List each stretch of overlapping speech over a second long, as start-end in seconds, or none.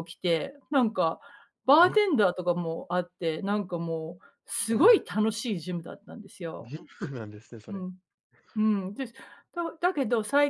none